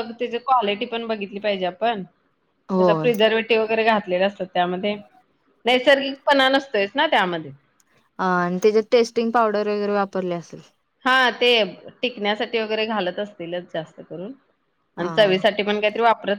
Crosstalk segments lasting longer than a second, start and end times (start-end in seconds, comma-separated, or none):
none